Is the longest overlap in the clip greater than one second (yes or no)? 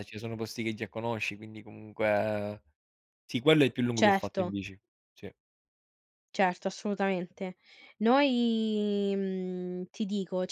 no